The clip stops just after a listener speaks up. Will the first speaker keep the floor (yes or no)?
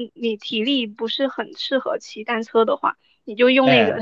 yes